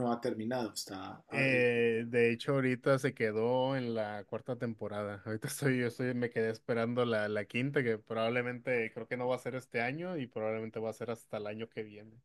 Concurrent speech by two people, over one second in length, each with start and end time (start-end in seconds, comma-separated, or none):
none